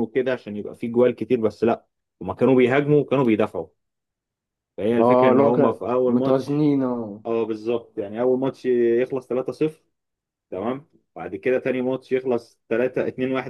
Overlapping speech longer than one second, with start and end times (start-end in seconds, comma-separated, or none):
5.0-6.7